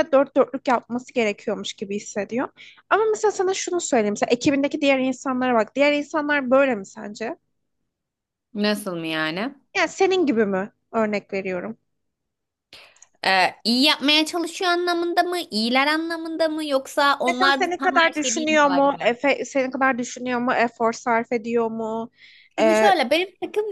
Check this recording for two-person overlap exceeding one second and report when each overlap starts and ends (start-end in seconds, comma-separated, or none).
17.2-19.1